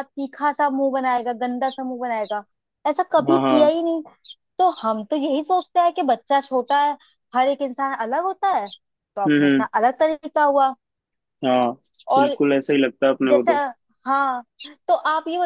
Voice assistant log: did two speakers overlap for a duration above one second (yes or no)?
no